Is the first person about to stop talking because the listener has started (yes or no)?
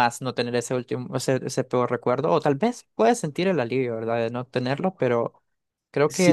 yes